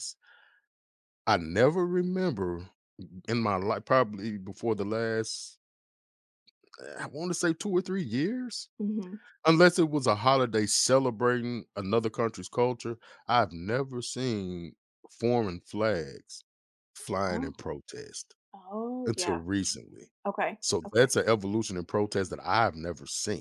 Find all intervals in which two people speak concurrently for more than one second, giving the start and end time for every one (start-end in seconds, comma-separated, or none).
none